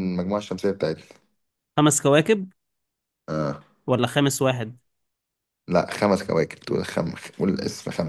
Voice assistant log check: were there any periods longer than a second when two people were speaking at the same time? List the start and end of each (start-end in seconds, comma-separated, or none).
none